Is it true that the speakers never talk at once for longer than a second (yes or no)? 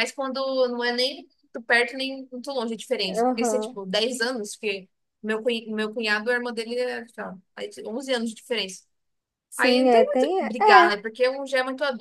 no